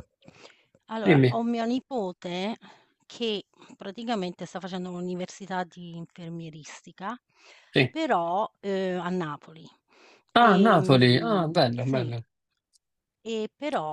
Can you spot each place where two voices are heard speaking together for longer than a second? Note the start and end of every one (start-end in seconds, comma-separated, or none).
10.4-12.1